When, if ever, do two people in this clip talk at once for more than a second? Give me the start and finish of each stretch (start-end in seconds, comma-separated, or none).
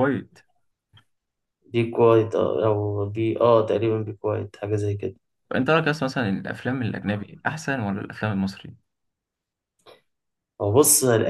none